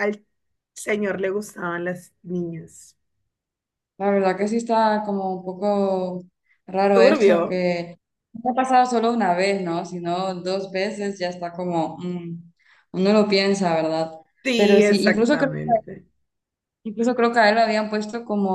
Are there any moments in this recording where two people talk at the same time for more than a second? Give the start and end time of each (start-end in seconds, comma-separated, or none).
14.5-15.7